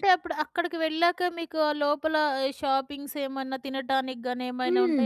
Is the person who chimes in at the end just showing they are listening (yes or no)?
no